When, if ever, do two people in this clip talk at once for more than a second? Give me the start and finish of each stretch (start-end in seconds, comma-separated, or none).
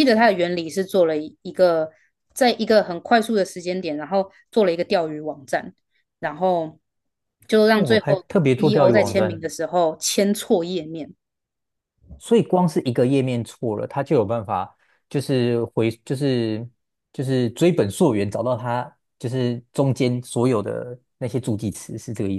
7.7-9.4